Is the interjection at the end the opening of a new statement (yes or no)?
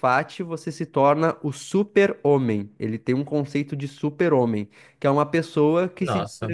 no